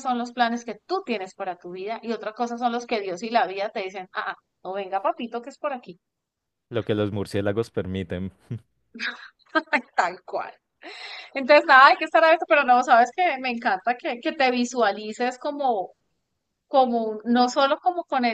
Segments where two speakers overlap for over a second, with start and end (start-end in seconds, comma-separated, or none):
none